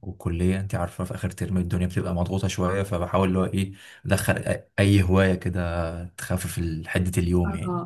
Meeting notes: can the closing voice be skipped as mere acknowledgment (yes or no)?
no